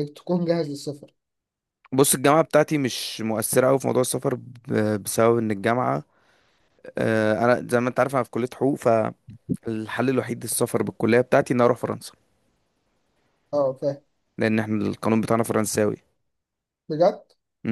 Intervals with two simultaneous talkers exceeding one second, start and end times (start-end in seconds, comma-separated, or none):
none